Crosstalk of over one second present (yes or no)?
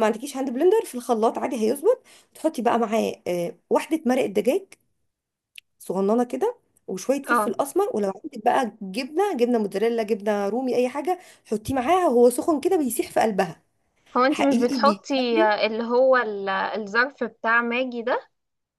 yes